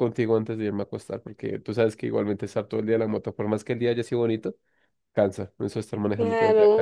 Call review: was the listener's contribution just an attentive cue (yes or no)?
no